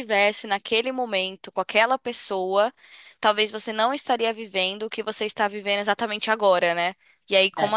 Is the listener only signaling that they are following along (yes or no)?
yes